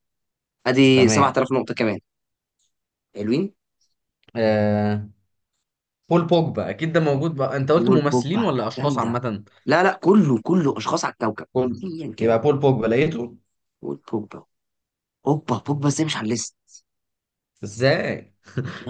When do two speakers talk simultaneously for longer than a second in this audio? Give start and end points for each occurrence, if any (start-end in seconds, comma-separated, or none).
7.8-9.2